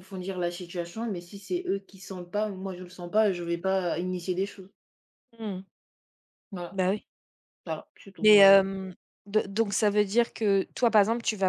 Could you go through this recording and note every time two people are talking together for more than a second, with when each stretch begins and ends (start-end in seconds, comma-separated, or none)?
none